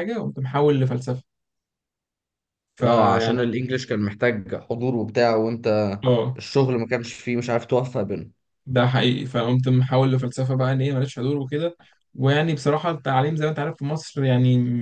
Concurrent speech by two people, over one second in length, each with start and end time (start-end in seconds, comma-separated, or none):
none